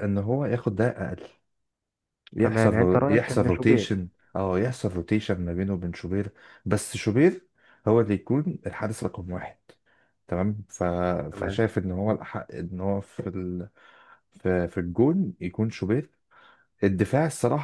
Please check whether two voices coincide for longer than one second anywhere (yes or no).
yes